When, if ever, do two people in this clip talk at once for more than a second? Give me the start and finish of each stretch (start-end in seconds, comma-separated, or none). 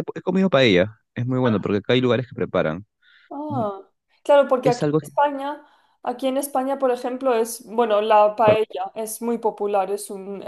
none